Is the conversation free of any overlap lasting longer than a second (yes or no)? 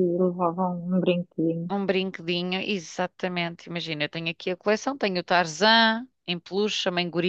yes